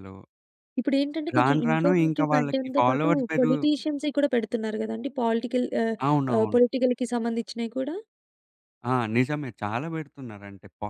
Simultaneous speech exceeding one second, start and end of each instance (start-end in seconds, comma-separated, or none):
1.4-3.6